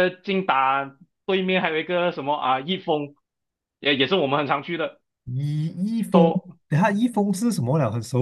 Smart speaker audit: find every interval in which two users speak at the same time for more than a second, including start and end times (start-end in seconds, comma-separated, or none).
none